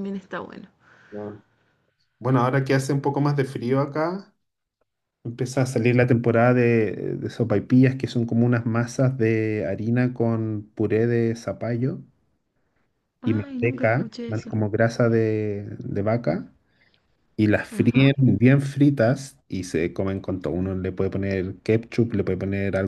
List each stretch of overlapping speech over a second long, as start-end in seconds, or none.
13.2-14.5